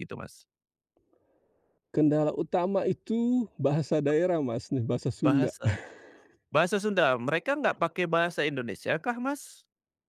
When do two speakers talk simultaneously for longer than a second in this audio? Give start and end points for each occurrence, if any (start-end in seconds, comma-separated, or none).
none